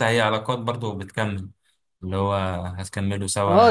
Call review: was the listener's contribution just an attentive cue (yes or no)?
no